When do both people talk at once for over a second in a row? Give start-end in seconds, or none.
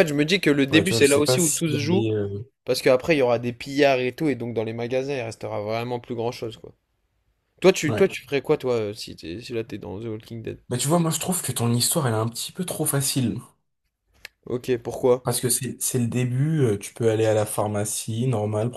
0.7-2.1